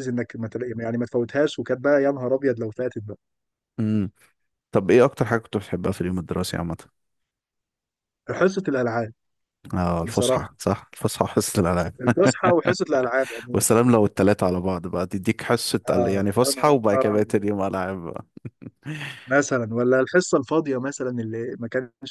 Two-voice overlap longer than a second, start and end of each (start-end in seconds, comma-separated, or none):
15.9-17.5